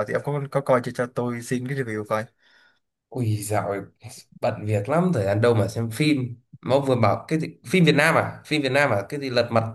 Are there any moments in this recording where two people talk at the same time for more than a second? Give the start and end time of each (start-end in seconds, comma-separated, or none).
none